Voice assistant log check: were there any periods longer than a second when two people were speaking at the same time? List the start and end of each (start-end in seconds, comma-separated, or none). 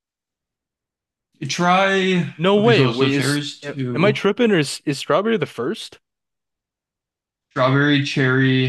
2.4-4.2